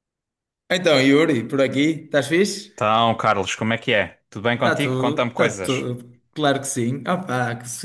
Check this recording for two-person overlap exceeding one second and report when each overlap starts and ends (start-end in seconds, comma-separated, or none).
4.6-5.8